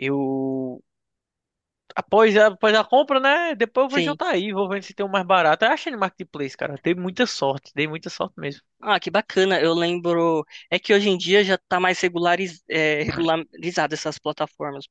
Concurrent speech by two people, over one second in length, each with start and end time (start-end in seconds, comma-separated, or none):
none